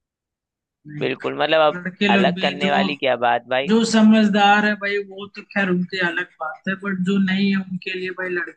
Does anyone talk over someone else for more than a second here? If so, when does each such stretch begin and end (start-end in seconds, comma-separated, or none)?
1.0-2.7